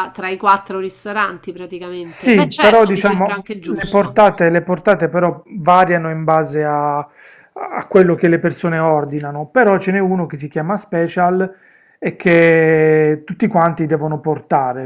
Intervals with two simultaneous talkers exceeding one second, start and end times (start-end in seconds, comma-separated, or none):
2.0-4.2